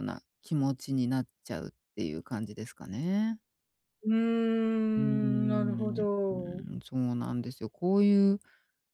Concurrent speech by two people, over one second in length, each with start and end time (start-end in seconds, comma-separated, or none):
5.0-6.6